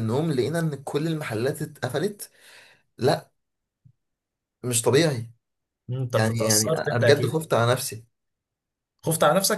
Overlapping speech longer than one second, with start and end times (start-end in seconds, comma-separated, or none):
6.1-7.4